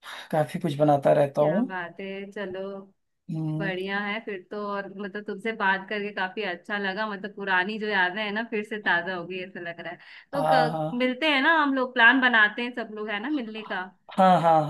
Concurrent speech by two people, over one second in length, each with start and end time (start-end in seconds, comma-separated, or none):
none